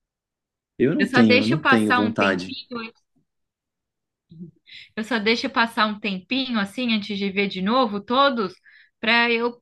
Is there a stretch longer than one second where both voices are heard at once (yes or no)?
yes